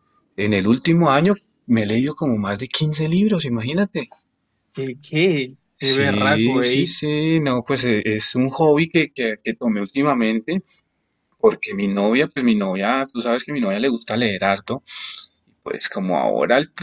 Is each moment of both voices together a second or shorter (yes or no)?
no